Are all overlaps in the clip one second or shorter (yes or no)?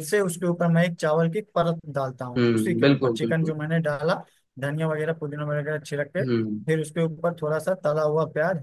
no